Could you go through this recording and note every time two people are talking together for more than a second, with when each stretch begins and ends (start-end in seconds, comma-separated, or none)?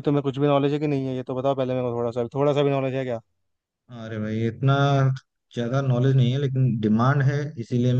none